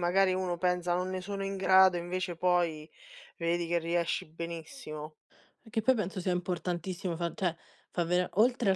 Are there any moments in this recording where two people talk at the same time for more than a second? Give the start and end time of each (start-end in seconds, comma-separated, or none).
none